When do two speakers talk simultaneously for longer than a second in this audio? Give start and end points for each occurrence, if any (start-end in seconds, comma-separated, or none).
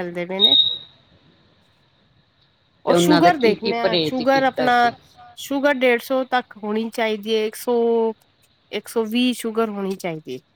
2.9-4.7